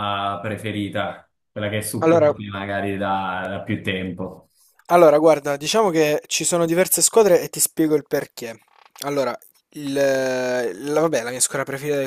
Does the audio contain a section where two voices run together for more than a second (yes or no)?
no